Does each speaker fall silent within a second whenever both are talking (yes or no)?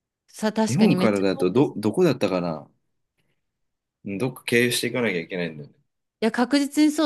no